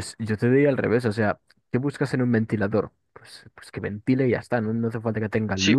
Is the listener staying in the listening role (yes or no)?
no